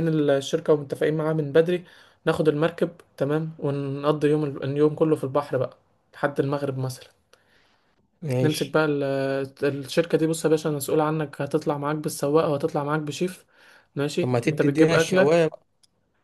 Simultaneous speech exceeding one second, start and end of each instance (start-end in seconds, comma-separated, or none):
14.2-15.5